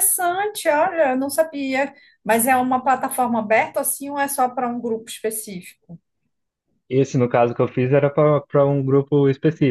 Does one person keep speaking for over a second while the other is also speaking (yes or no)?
no